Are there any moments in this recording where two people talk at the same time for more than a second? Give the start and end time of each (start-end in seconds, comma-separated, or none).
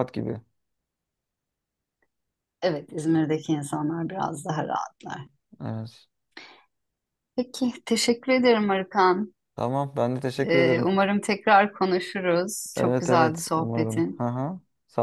12.8-14.3